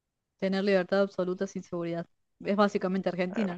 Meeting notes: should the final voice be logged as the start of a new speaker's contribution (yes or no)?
yes